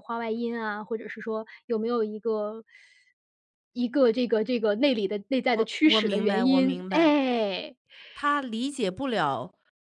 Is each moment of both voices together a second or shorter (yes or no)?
no